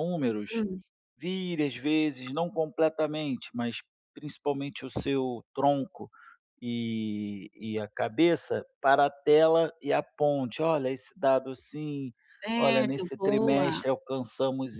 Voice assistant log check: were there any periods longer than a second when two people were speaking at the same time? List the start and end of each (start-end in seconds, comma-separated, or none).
12.6-13.8